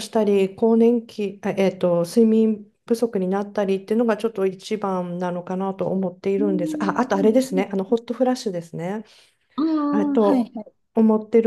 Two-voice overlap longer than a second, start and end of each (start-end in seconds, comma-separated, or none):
6.4-7.6